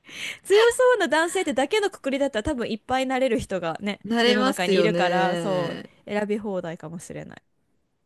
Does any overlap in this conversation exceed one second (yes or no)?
yes